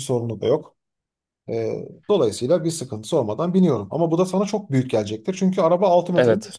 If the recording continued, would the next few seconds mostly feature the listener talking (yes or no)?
yes